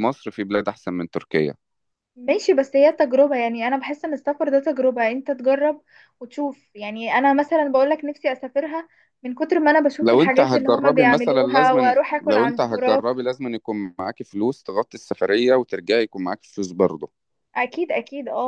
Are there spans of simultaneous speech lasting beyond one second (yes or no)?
yes